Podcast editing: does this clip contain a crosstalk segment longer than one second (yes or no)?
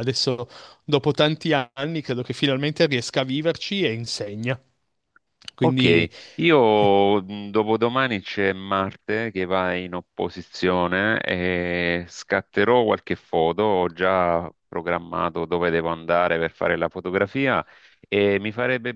no